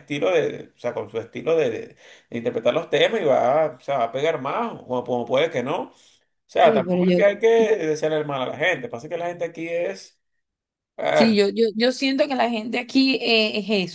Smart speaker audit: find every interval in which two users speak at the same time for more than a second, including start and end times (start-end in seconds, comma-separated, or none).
none